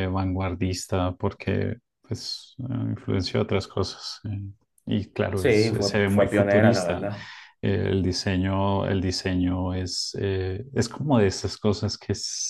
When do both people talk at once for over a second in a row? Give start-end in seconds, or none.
5.4-7.1